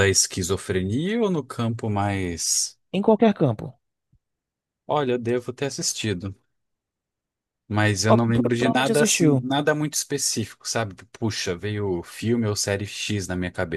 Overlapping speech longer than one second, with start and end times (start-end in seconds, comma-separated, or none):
8.1-9.5